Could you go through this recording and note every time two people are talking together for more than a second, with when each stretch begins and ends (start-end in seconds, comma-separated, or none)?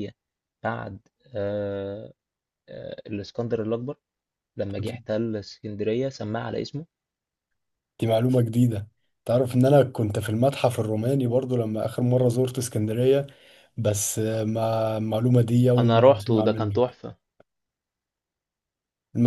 15.8-17.0